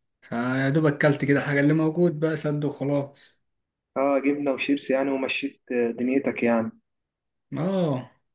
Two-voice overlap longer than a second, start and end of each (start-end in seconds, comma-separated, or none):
none